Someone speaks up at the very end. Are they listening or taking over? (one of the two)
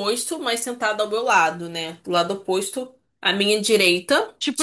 taking over